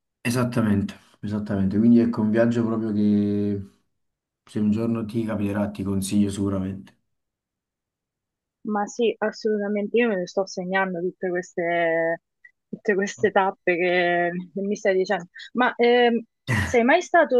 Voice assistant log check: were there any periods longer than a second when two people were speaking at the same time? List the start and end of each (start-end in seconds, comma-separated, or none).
none